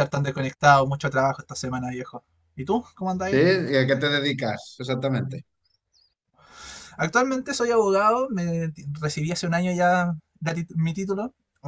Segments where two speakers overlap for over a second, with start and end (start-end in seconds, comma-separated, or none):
none